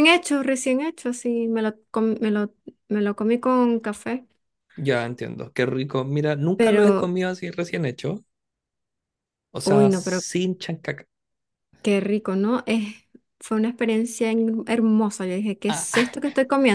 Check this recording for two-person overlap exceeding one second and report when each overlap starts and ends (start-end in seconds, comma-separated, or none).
none